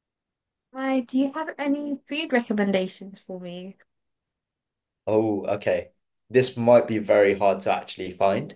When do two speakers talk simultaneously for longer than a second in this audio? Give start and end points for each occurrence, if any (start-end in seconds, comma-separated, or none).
none